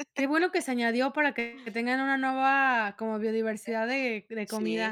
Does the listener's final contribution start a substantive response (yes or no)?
yes